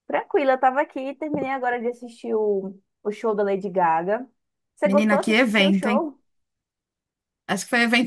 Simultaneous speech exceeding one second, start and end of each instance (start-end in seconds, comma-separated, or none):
4.8-6.1